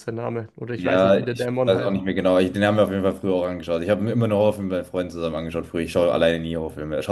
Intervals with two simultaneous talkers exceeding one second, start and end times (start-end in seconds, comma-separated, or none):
0.8-2.0